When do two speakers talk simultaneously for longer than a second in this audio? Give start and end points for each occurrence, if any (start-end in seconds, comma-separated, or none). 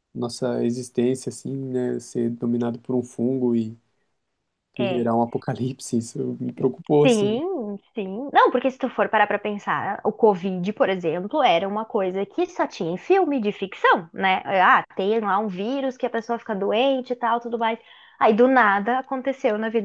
none